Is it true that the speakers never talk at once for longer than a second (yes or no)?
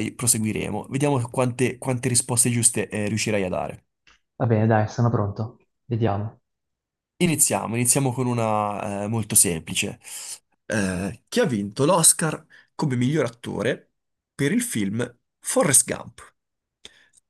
yes